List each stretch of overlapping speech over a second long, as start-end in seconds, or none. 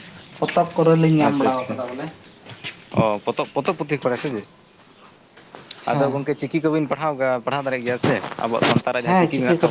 none